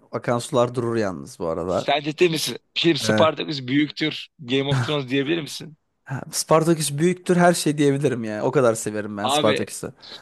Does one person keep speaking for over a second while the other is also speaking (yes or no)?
no